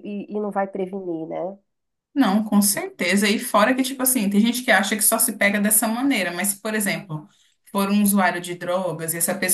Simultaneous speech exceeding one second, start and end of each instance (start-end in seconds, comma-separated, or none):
none